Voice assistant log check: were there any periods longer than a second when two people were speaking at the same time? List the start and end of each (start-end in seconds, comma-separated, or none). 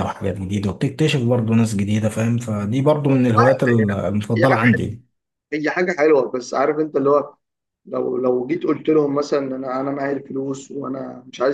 3.4-4.8